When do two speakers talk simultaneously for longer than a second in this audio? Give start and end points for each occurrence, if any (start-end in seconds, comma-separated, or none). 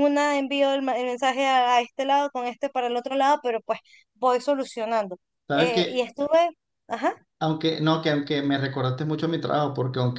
none